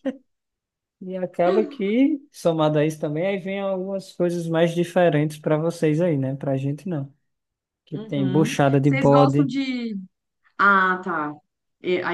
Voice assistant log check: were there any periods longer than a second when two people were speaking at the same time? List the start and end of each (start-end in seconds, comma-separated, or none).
7.9-9.5